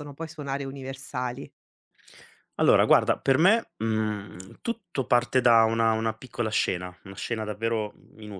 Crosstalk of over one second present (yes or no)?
no